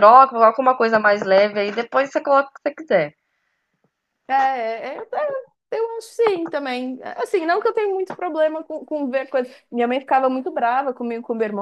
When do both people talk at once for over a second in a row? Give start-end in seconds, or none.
none